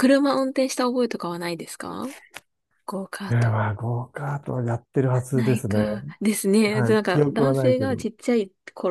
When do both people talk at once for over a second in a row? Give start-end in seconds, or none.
6.7-8.1